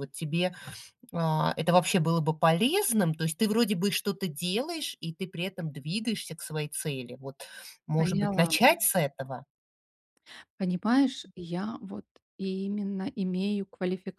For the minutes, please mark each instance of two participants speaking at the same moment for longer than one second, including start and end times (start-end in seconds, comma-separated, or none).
none